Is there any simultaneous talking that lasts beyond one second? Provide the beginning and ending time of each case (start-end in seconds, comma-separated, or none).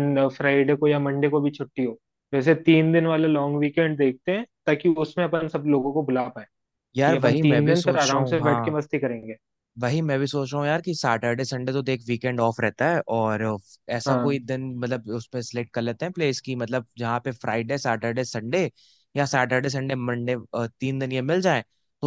7.0-8.7